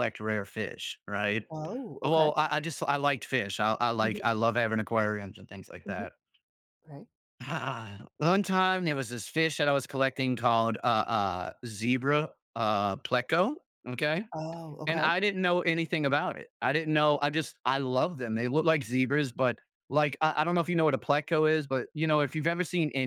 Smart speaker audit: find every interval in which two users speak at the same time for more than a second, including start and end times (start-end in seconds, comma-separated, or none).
none